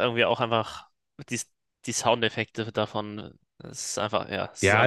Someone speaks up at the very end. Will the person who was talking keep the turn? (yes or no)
no